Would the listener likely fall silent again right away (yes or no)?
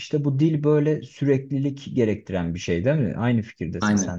no